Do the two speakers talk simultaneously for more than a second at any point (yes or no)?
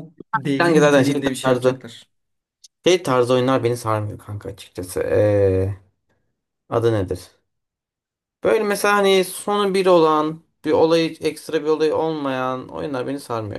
yes